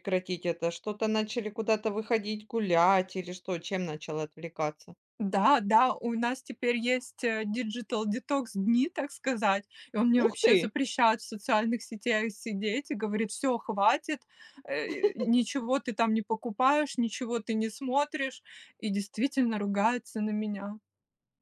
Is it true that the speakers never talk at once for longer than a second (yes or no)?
yes